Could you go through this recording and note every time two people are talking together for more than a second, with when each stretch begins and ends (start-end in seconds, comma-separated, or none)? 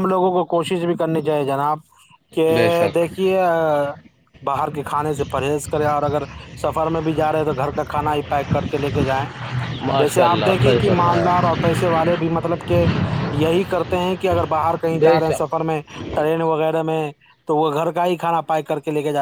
10.0-11.3